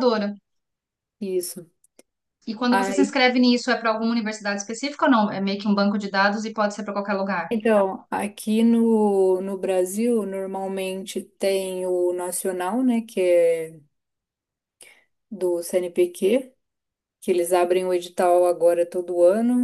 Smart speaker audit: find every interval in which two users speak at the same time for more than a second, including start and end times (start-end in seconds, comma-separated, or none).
none